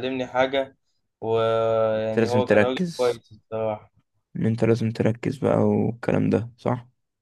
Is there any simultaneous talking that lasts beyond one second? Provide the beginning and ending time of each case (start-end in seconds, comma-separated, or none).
2.0-3.2